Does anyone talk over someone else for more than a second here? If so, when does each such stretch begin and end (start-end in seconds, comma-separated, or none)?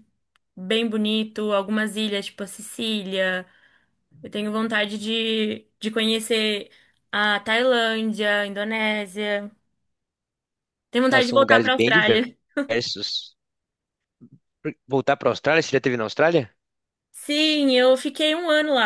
11.1-12.3